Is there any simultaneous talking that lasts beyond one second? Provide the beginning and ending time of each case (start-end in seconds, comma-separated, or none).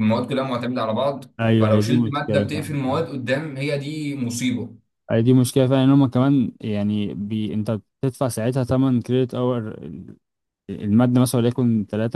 1.4-3.1